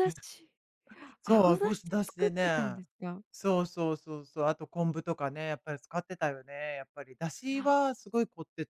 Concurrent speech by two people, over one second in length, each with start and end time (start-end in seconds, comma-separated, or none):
1.2-2.8